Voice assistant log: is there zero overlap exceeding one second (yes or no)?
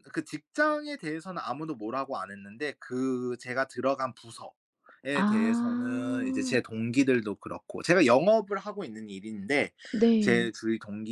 no